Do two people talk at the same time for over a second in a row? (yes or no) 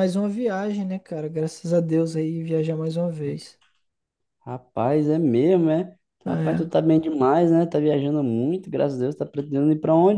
no